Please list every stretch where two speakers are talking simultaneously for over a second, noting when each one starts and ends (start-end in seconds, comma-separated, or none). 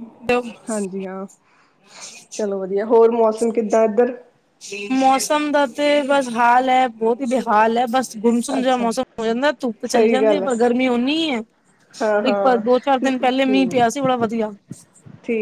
none